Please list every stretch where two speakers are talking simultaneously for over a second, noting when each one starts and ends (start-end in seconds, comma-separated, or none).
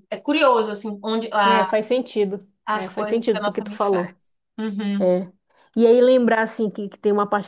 2.6-4.0